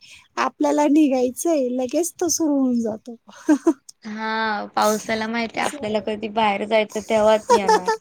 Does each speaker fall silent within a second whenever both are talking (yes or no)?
yes